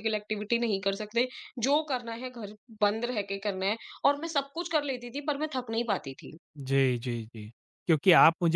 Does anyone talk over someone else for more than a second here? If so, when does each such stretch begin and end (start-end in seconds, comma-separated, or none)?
none